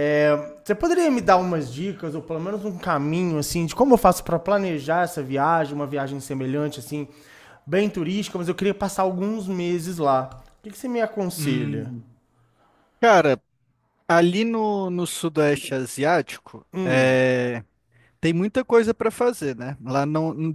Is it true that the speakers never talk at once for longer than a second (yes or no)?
yes